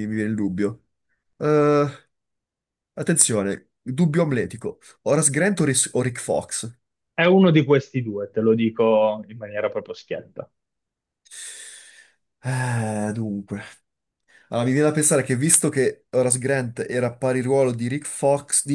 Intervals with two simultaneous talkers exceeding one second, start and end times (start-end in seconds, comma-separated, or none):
none